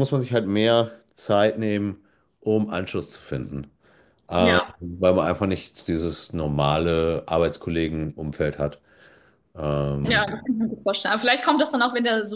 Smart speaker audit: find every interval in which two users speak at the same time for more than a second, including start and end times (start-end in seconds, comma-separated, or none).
none